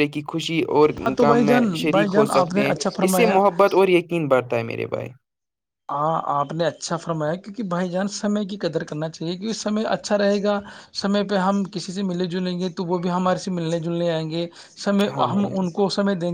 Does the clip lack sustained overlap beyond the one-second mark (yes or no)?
no